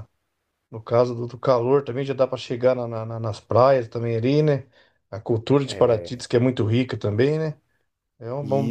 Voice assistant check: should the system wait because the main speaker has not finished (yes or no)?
yes